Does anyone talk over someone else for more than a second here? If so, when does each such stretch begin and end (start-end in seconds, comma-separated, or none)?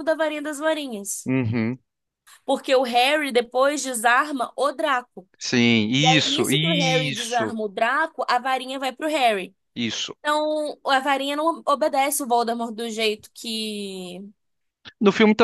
6.0-7.5